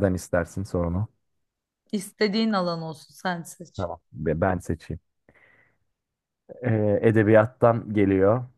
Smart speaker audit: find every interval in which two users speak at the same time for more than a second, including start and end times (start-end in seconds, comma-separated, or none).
none